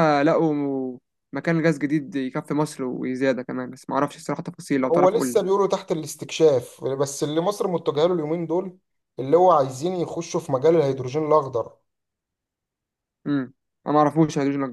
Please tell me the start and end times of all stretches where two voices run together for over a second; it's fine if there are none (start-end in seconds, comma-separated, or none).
none